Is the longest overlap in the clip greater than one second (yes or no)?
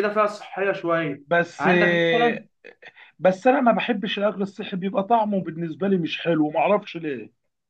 no